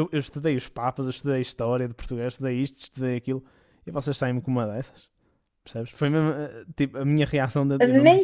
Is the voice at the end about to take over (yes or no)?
yes